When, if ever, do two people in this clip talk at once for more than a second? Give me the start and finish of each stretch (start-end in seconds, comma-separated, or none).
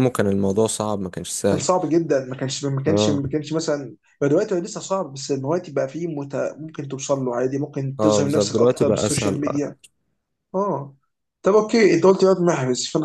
8.0-9.4